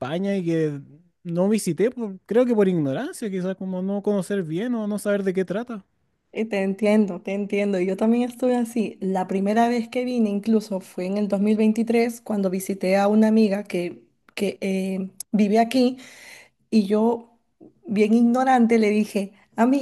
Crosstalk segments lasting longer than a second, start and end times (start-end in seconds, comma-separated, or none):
none